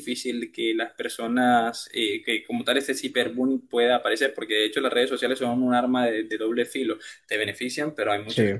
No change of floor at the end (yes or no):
yes